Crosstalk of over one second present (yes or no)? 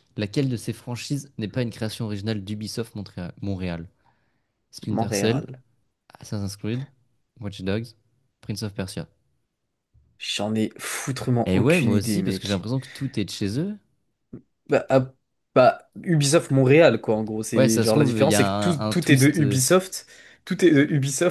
yes